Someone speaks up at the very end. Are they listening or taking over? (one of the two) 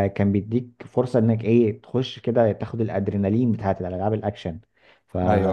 listening